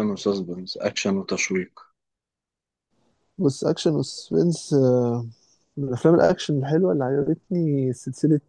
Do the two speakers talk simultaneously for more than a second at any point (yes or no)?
no